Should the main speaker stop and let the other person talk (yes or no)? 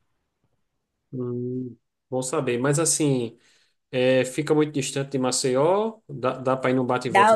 yes